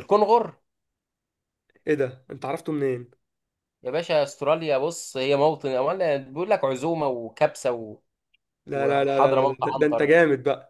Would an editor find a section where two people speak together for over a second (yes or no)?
yes